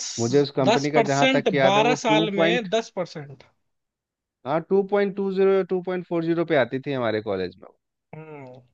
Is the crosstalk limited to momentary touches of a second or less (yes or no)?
no